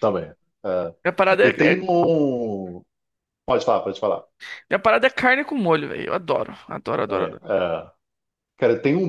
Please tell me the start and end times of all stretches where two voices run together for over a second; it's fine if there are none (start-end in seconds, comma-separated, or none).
none